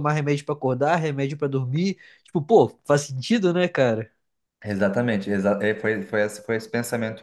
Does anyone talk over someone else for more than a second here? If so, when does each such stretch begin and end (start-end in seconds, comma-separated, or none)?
none